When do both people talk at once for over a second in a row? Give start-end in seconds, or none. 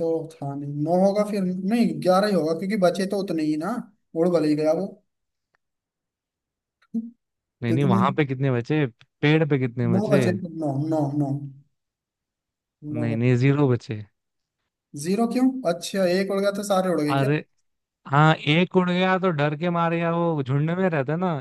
none